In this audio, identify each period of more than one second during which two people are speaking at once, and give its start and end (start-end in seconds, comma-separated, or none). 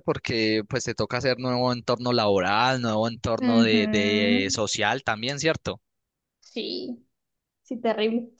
3.4-4.6